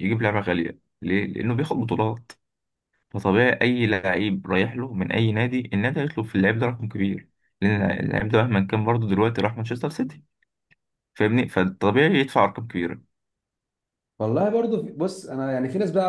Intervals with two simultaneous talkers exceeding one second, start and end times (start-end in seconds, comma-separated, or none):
none